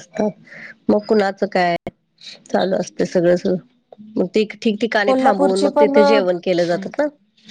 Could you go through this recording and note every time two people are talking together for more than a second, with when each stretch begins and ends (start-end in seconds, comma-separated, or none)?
5.0-6.8